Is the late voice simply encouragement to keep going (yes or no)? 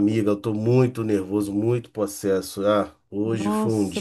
no